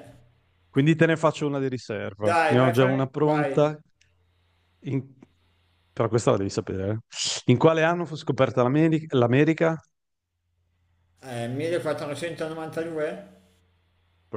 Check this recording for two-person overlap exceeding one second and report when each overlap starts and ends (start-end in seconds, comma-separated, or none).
2.2-3.7